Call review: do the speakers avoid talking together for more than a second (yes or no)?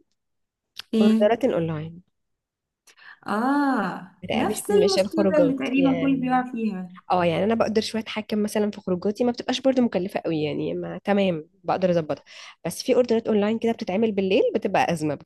no